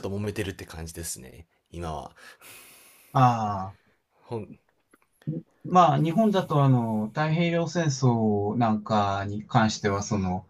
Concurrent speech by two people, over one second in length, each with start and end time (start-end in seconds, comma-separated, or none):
none